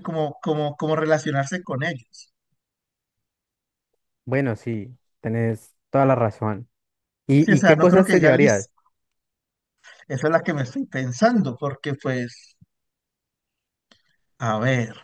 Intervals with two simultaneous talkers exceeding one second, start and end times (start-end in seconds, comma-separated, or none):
7.4-8.7